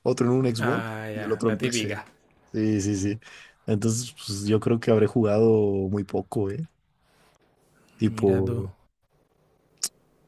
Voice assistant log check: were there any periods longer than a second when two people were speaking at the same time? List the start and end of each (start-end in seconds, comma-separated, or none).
0.6-2.0